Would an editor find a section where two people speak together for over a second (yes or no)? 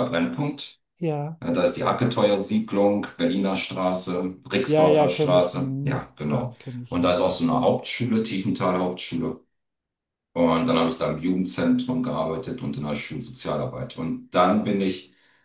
yes